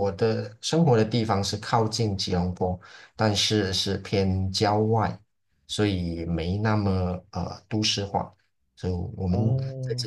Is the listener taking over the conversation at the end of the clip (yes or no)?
no